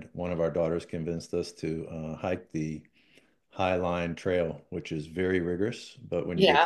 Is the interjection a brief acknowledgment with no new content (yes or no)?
yes